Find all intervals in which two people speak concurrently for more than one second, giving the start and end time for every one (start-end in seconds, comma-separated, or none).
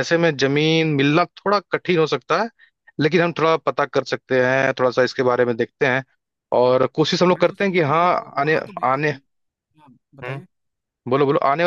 7.3-9.1